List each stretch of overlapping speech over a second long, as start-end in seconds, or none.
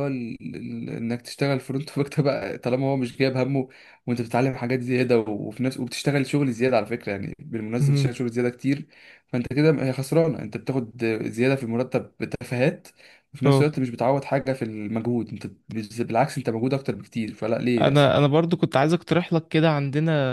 none